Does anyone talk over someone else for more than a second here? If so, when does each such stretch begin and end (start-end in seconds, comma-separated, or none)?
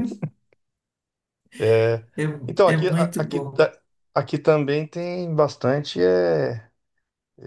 2.5-3.7